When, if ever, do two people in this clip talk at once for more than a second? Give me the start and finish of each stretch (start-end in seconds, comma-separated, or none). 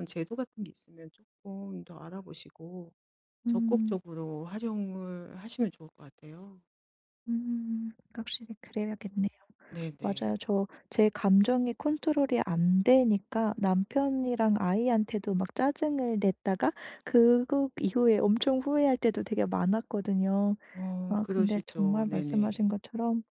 21.1-22.7